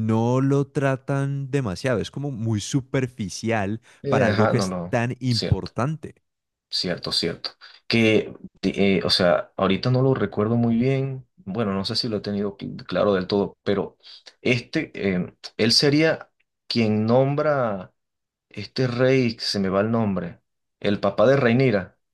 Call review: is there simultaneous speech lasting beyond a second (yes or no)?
yes